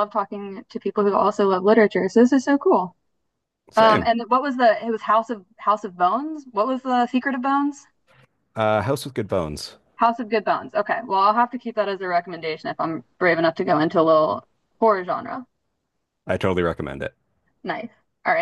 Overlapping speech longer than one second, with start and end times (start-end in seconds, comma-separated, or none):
none